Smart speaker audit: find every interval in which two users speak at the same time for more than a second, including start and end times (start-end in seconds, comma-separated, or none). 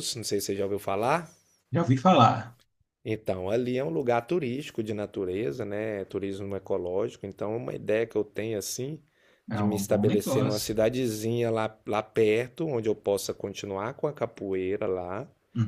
9.5-10.7